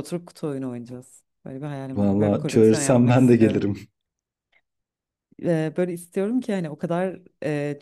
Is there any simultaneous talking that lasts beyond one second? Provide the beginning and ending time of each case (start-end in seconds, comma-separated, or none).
1.9-3.7